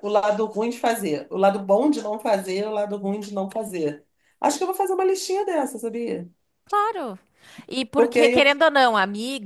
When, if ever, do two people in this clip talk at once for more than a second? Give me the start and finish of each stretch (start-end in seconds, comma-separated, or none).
none